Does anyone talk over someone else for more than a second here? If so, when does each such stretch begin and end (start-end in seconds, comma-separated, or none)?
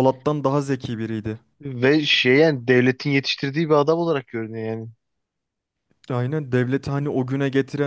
none